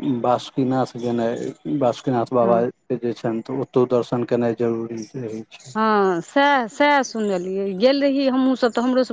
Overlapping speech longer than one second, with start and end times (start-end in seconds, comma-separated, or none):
none